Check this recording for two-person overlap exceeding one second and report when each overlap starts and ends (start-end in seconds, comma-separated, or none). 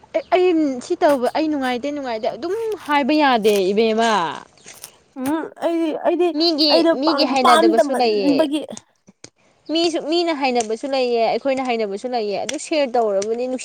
6.7-8.4